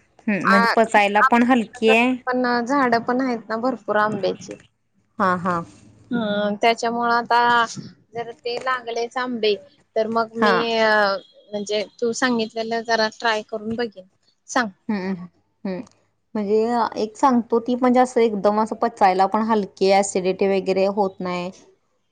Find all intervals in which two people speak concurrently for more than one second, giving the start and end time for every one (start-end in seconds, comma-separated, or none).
0.5-2.1